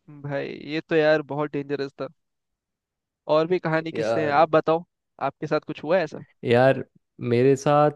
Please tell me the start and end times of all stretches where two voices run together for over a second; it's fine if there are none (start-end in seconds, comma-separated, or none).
none